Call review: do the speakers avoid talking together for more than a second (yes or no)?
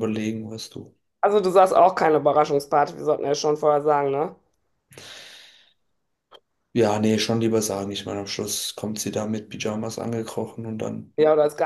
yes